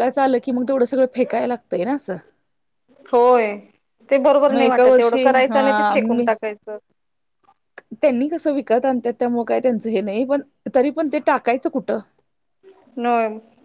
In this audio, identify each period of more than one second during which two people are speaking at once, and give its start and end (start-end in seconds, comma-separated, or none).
4.5-6.2